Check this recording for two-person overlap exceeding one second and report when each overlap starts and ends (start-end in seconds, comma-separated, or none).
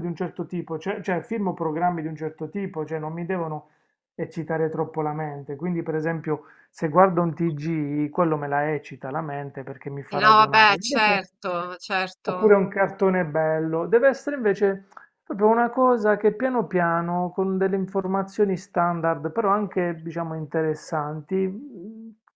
10.1-11.3